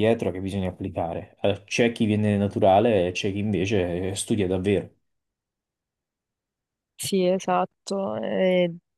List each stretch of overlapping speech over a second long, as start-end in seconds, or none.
none